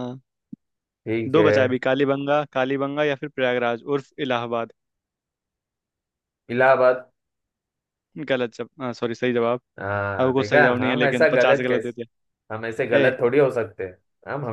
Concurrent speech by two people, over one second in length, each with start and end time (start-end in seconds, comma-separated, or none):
10.2-12.0